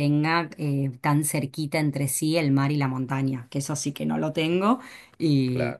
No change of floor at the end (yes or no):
yes